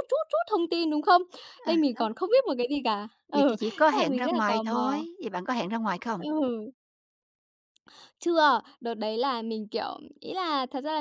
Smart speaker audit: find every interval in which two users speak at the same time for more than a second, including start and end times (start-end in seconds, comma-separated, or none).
3.3-5.0